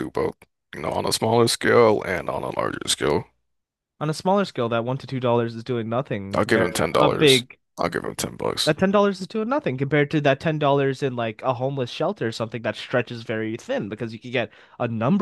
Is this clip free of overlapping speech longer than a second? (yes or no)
no